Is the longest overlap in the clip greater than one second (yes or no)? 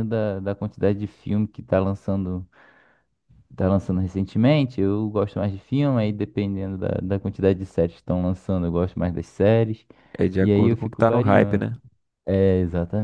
yes